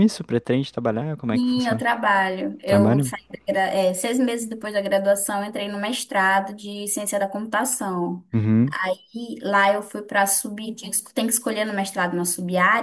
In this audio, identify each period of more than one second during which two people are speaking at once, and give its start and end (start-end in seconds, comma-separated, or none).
none